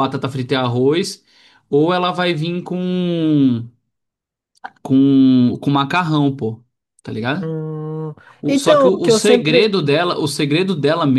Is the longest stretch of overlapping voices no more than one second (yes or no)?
no